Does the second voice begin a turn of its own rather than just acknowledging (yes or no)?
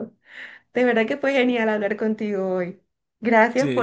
no